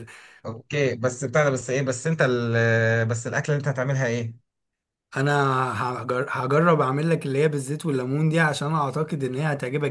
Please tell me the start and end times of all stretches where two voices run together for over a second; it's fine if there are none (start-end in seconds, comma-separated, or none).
none